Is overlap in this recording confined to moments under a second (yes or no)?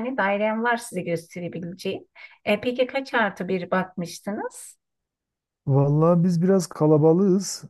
yes